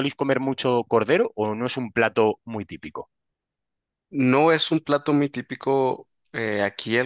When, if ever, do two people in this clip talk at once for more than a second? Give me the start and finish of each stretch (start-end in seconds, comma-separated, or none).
none